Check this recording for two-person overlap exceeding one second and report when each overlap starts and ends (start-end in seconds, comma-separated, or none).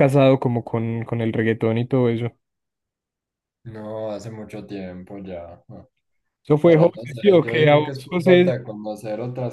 6.6-8.6